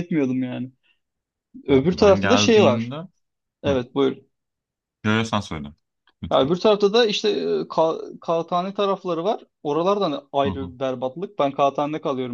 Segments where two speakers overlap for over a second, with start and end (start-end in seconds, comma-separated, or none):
1.7-2.9